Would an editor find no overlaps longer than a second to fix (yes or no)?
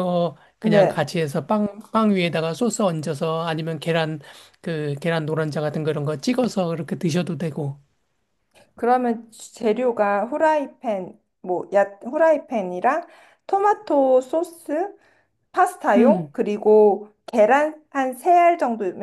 yes